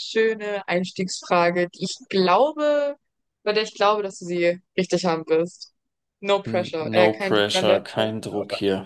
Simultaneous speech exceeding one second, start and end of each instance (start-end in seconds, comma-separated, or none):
6.5-8.1